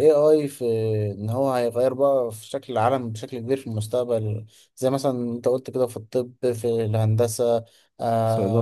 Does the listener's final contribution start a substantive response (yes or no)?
no